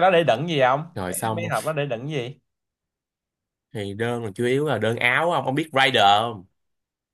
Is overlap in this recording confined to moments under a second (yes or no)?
yes